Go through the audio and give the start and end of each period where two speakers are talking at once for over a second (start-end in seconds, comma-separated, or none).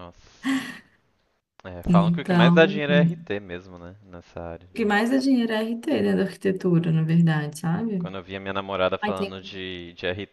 1.9-3.2